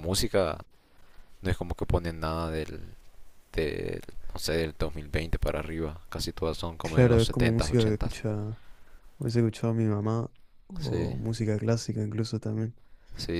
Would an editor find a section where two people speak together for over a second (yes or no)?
yes